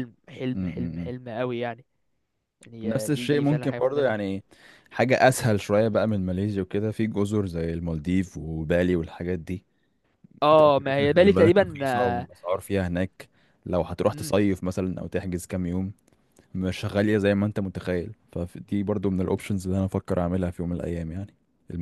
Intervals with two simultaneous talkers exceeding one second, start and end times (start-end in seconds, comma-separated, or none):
2.8-4.1, 10.6-12.3